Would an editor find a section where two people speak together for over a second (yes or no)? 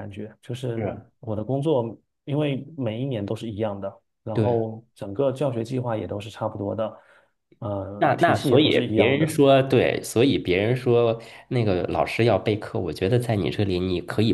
yes